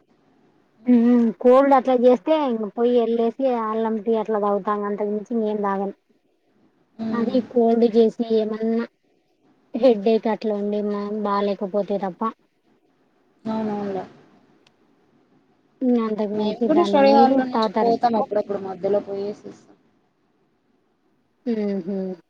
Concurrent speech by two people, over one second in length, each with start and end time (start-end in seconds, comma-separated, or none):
16.4-18.3